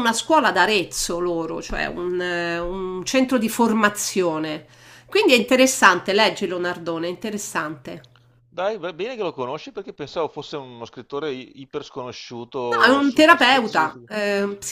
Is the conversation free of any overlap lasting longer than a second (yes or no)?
no